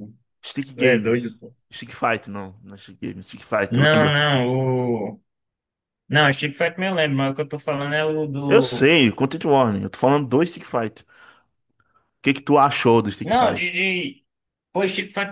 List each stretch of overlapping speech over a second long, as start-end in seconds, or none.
none